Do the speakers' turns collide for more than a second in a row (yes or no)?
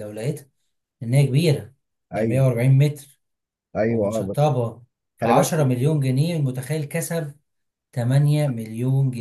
no